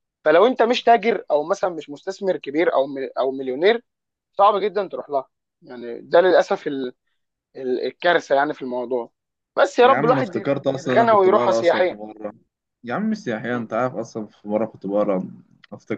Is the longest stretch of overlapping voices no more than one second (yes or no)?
no